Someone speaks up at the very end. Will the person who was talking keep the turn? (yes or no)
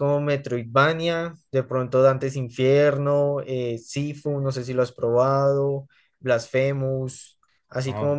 yes